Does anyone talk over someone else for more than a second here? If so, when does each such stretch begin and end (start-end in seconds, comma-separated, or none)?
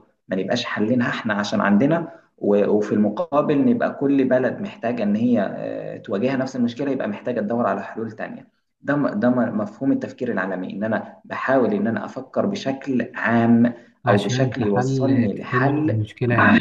14.1-16.1